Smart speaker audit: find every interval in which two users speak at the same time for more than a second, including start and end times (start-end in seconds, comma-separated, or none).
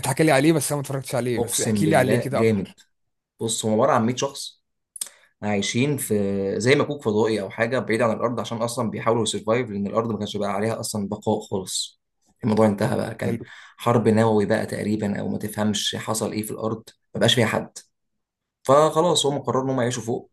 1.4-2.7